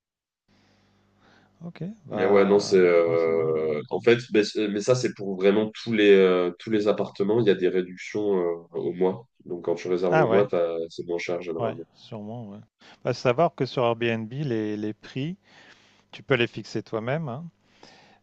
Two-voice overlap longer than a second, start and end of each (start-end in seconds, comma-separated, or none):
2.1-3.7